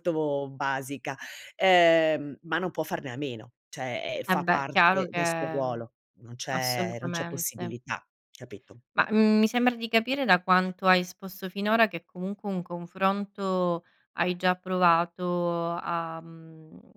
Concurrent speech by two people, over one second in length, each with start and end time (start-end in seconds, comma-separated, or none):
4.3-5.8, 6.5-7.8